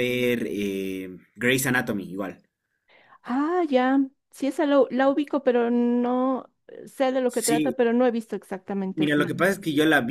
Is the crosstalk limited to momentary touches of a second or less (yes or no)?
yes